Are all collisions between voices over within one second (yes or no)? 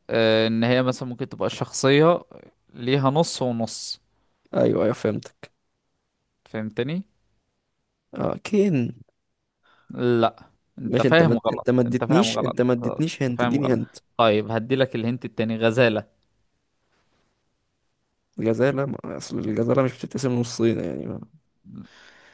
no